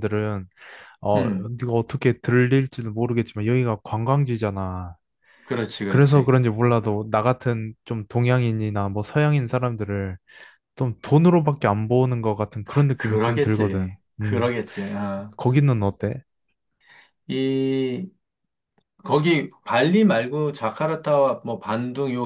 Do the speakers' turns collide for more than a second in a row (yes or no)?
yes